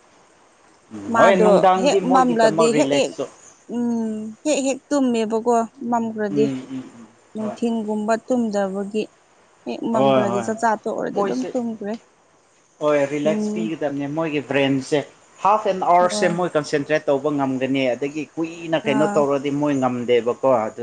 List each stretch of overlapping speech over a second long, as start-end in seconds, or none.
1.1-3.1